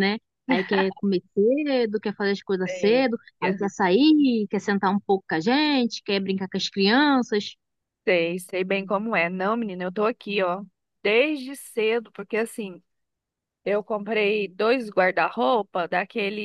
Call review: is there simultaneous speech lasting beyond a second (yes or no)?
no